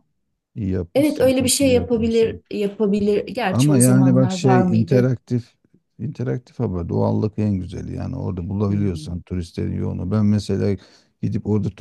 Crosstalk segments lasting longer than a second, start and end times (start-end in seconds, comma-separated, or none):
0.9-2.4, 3.5-5.1